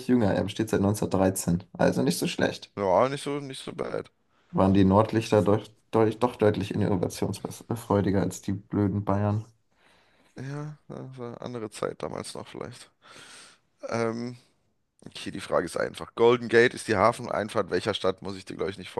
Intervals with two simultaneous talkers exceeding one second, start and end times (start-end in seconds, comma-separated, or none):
none